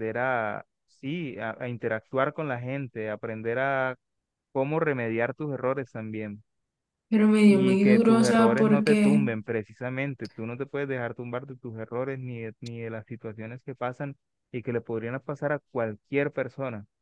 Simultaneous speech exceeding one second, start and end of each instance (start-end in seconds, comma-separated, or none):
7.5-9.2